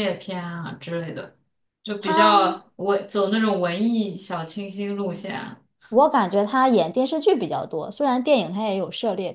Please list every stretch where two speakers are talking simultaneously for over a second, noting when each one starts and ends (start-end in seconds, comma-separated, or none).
none